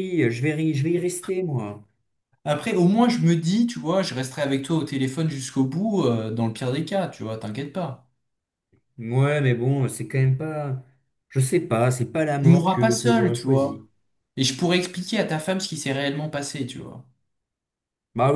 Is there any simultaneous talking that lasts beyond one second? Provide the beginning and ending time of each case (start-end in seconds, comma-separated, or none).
12.4-13.8